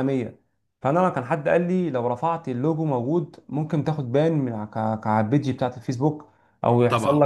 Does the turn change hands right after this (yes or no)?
no